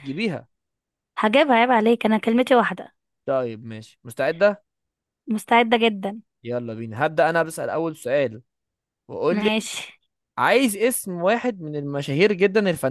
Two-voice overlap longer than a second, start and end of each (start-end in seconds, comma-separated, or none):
none